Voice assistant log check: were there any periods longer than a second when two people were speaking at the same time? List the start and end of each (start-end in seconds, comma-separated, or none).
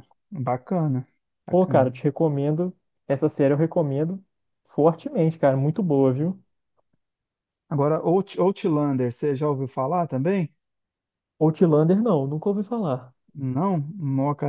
none